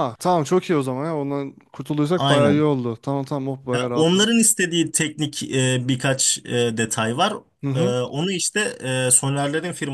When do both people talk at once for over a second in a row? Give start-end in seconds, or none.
none